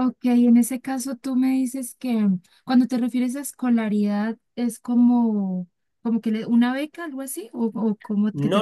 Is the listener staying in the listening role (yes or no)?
no